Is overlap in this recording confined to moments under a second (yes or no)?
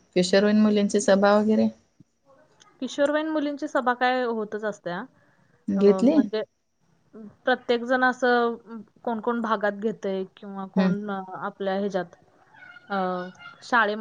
yes